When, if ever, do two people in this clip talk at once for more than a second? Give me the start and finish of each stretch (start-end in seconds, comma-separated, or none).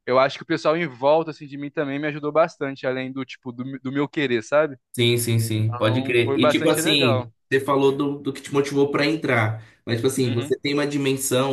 5.3-7.3